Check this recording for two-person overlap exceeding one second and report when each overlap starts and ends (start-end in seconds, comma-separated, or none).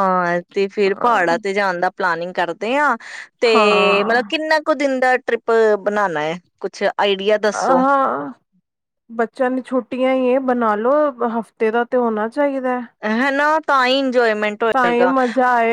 none